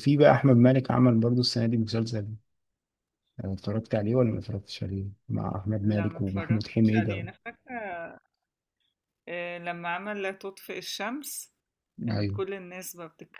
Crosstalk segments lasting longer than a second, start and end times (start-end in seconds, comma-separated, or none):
5.8-7.2